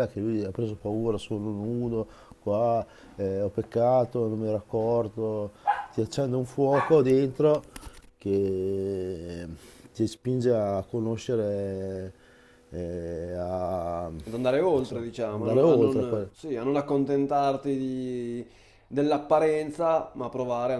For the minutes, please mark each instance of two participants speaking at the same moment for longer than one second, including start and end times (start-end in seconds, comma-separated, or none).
14.3-16.3